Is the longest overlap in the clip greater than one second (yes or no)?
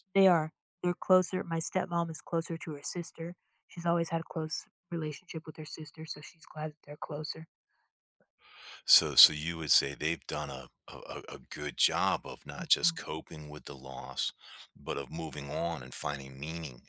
no